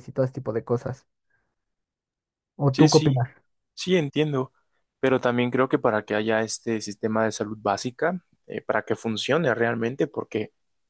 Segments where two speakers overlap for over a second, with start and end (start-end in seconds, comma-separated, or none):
none